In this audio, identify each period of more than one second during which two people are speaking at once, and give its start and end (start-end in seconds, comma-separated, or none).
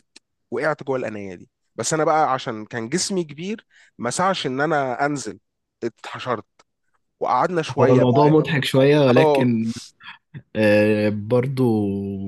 none